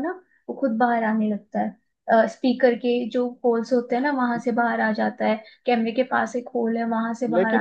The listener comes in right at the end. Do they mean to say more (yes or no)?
yes